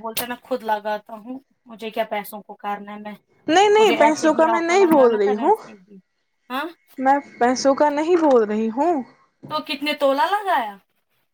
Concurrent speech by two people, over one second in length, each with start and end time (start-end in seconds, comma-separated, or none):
3.8-5.5